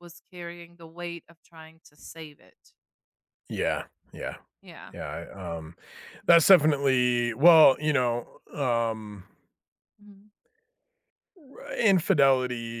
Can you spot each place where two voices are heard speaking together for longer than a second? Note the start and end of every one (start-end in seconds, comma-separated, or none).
none